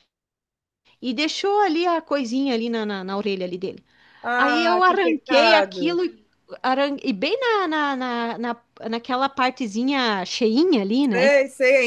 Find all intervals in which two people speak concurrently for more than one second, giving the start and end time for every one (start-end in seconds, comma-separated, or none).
4.4-6.0